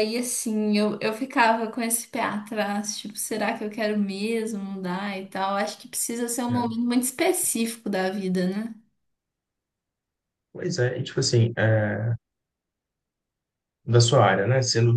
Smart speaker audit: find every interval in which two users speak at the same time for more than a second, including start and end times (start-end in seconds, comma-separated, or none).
none